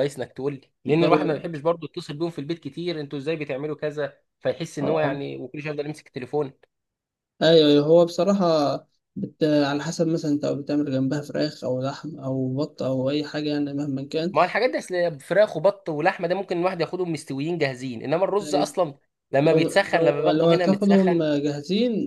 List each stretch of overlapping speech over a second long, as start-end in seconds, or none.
19.4-21.2